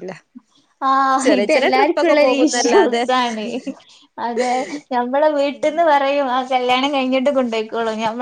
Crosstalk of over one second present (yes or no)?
yes